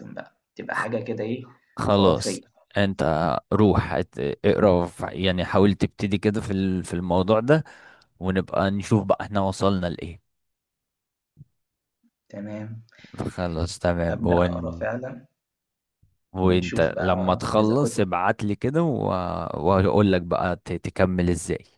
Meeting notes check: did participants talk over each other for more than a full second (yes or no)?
yes